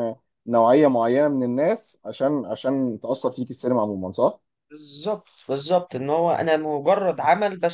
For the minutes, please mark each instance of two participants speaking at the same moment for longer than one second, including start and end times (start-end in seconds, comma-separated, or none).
none